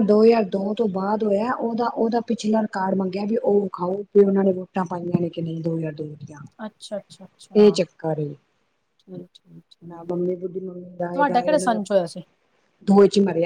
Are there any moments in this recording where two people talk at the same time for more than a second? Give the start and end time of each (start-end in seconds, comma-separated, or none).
none